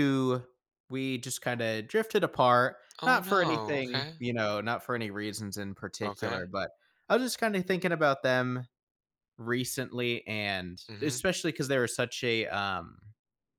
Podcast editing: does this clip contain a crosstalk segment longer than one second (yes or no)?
yes